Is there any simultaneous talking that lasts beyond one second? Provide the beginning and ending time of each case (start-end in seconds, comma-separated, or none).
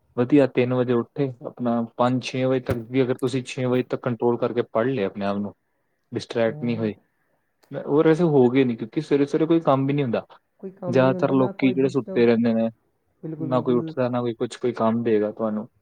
10.9-12.3